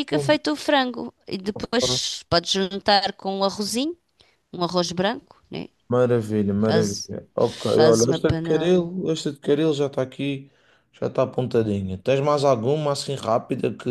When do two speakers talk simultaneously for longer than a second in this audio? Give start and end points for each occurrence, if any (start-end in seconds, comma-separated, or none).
6.7-8.8